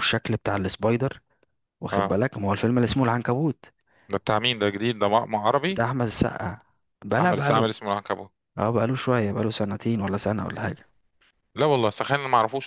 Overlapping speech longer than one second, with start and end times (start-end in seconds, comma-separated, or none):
none